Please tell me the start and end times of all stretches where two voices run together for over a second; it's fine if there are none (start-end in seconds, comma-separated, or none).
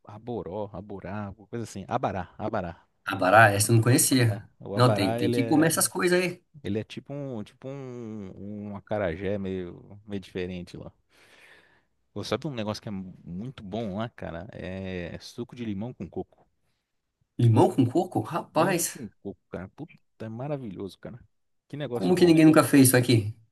4.3-5.7